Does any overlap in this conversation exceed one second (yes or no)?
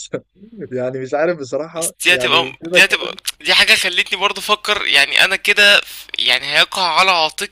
yes